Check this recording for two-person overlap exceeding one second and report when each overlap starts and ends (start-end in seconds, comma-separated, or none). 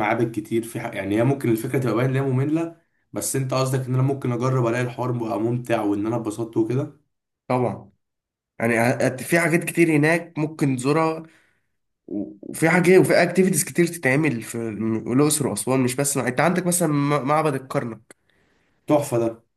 none